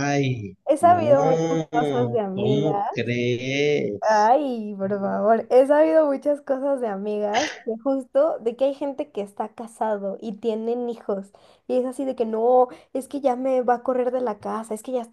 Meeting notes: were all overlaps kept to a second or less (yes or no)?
no